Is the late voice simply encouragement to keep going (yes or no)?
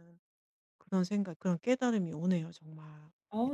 no